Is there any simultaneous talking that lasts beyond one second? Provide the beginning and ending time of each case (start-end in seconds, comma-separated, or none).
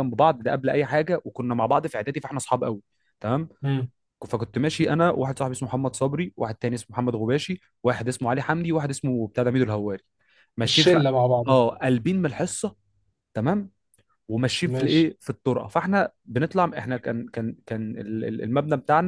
none